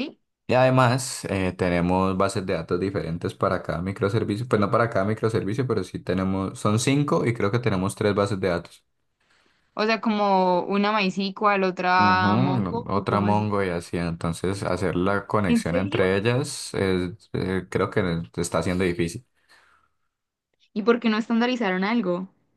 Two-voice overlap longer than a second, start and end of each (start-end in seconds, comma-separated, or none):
11.9-13.5